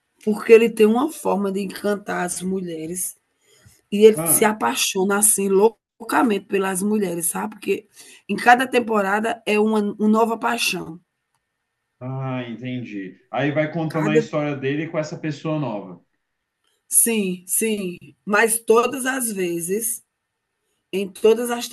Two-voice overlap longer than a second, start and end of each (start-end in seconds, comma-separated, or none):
none